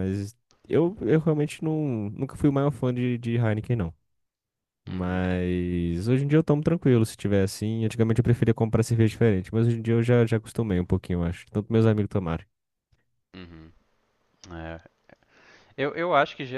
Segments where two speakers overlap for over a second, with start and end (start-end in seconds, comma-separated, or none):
none